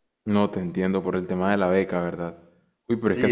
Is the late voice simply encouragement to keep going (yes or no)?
yes